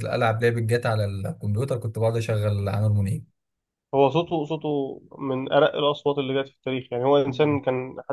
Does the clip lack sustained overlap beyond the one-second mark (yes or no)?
yes